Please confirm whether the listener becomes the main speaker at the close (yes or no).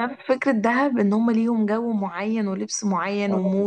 no